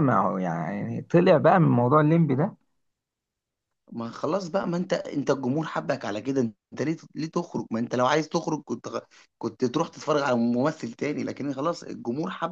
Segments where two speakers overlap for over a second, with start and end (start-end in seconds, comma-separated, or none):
none